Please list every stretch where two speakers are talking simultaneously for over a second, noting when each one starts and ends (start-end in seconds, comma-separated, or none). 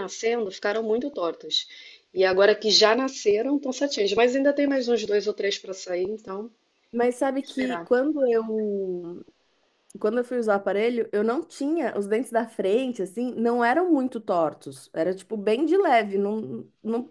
none